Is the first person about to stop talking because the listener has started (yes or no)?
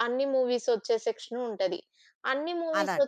no